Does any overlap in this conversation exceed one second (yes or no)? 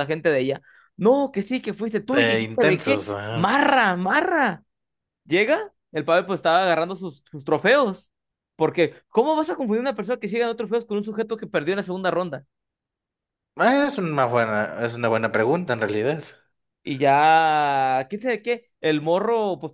yes